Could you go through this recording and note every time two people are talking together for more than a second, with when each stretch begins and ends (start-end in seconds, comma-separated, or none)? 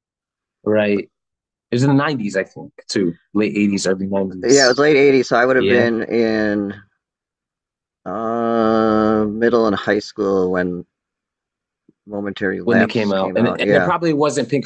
12.6-13.9